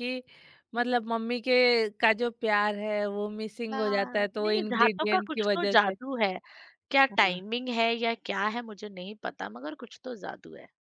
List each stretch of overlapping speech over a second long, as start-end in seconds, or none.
3.7-5.9